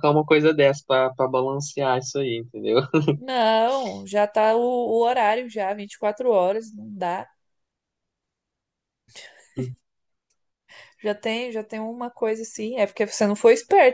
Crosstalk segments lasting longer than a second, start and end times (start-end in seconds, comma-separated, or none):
none